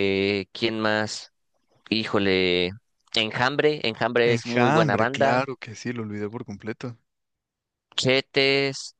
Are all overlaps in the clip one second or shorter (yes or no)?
no